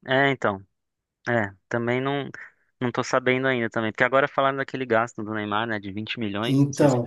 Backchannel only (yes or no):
no